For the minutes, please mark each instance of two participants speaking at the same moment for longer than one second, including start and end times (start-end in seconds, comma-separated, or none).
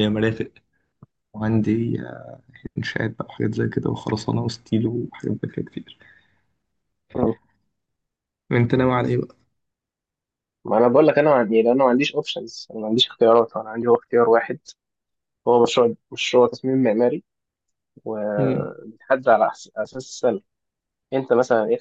none